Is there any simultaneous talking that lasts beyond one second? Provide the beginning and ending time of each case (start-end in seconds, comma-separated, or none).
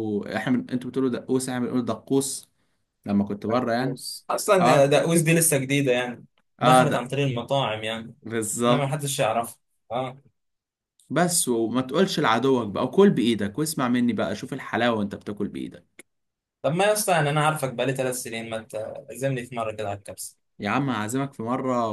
none